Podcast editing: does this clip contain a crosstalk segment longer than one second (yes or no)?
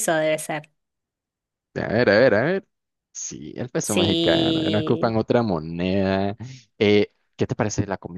yes